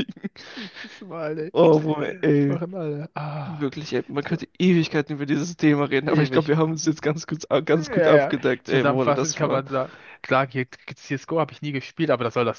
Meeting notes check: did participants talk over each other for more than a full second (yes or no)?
yes